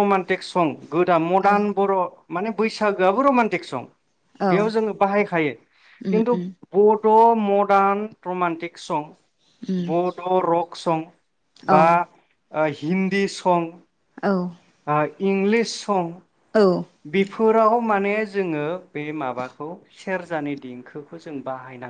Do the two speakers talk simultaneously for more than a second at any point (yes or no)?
no